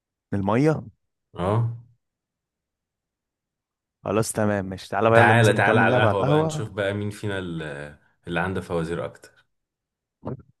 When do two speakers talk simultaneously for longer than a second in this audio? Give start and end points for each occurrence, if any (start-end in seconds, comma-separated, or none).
5.1-6.7